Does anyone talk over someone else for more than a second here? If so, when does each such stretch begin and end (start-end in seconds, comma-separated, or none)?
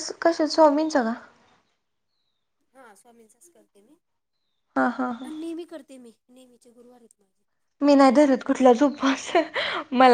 none